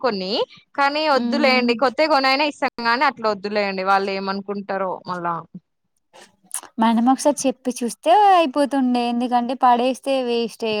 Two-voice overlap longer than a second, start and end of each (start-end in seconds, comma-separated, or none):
none